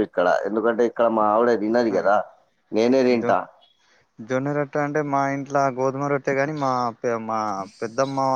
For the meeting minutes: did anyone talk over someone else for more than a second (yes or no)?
no